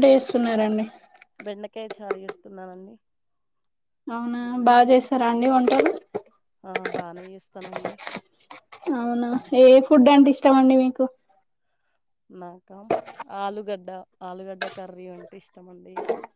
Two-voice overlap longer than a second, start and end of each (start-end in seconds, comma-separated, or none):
none